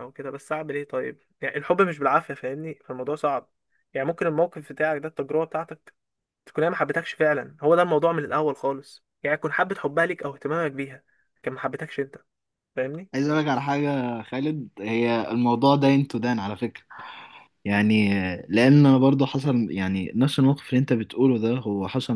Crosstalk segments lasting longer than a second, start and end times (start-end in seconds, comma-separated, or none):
none